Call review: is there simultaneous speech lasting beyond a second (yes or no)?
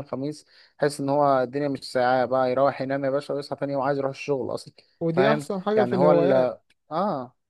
yes